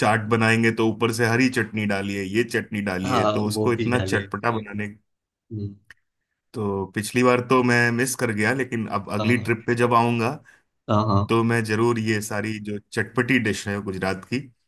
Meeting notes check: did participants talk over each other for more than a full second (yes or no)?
yes